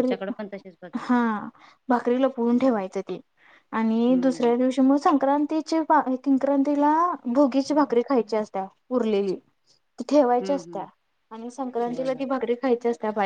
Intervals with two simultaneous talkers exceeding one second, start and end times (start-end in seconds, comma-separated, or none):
none